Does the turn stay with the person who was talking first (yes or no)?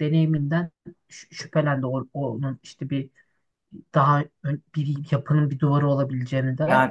no